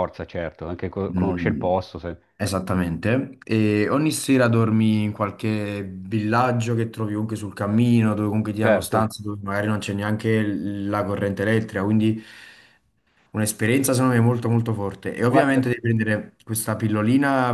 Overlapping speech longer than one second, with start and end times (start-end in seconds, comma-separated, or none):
none